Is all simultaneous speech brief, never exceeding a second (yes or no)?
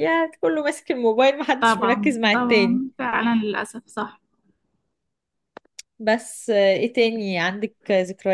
no